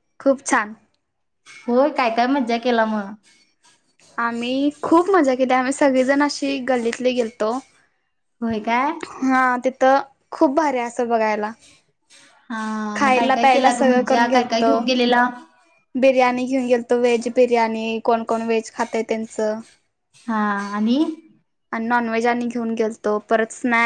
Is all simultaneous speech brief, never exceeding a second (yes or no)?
no